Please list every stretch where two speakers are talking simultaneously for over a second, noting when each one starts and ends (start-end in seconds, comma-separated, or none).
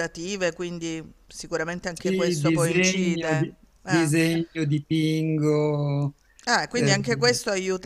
1.9-4.1